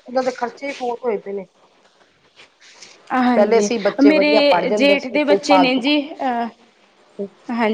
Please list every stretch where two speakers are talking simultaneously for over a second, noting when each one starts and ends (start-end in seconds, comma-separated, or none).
3.4-5.8